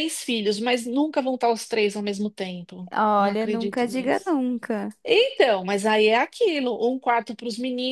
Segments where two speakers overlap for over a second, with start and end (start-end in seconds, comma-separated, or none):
2.9-4.3